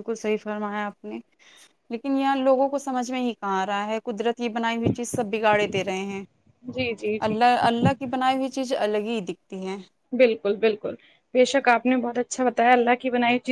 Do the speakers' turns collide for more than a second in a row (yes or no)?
no